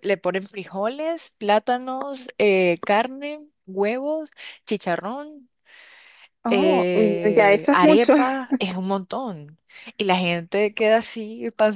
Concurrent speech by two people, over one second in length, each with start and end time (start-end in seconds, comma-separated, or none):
6.5-8.1